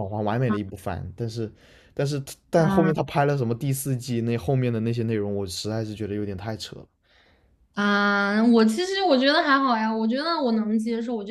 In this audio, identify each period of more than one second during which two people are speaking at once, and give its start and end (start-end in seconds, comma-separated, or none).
none